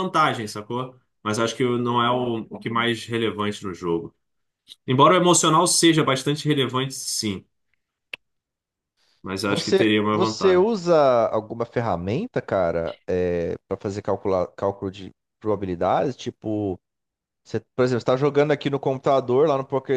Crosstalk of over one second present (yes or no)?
yes